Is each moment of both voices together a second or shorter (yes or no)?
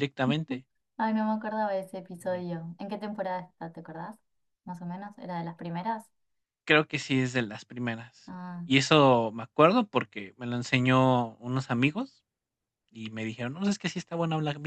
yes